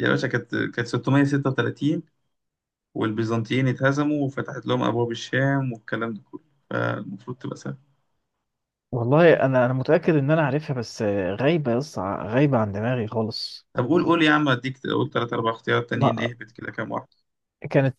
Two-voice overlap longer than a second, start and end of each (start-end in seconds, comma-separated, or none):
none